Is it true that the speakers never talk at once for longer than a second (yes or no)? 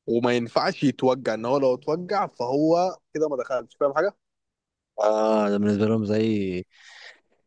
yes